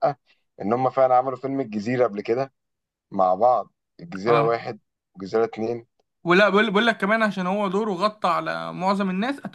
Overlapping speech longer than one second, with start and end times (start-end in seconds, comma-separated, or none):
none